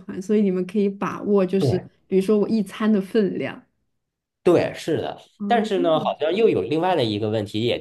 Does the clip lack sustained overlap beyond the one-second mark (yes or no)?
yes